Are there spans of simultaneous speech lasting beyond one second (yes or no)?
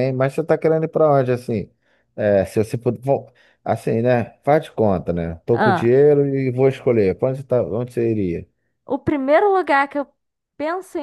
no